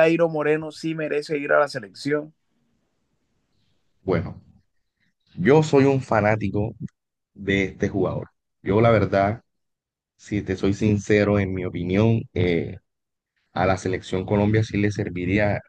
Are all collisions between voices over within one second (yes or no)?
yes